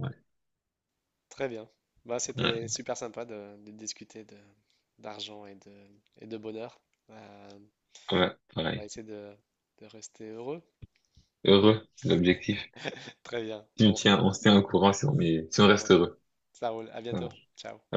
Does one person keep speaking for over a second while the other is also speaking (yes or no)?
no